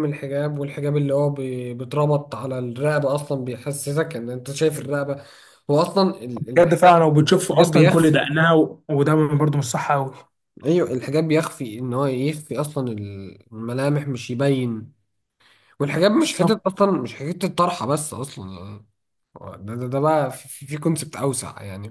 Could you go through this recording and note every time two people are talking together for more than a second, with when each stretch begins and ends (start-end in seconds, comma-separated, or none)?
6.4-8.2